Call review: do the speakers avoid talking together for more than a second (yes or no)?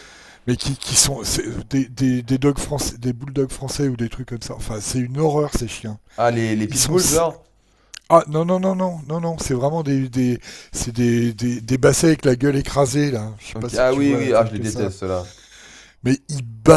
no